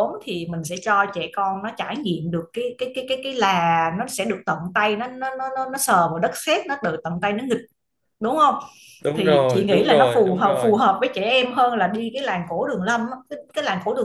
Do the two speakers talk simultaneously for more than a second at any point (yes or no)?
yes